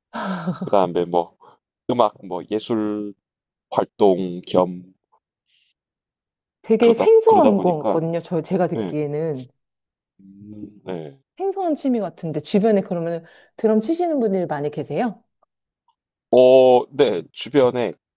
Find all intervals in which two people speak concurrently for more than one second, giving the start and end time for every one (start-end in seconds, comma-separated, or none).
6.8-8.0